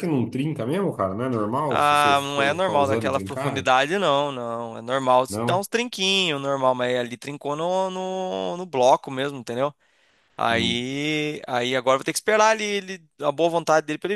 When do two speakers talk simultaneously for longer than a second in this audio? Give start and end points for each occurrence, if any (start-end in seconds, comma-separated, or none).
1.7-3.7